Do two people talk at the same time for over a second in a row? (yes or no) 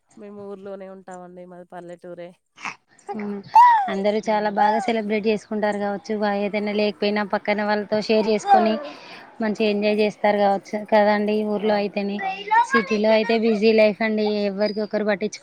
no